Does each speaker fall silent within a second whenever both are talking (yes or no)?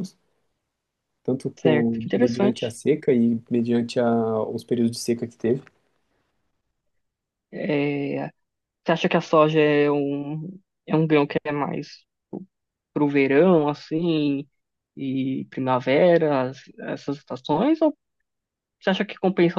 no